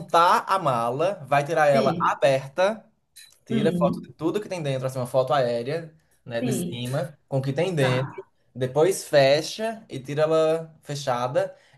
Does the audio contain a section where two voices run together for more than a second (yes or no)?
no